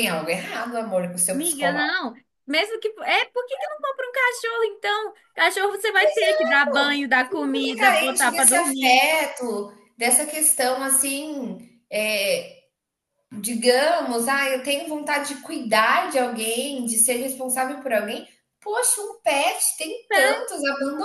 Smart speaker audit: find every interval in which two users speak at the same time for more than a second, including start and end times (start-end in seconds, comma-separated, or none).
7.2-9.0